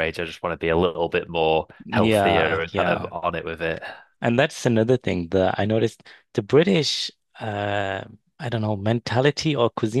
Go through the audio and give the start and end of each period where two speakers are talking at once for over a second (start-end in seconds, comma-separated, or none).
1.9-3.1